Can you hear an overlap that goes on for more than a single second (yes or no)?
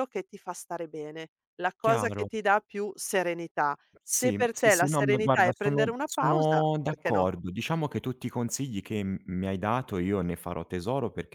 yes